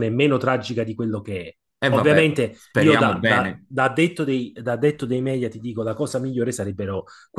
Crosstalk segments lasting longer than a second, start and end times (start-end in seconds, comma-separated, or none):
1.8-3.7